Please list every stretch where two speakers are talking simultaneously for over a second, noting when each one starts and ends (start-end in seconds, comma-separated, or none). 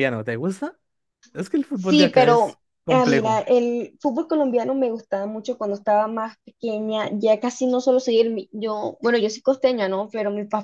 1.7-3.4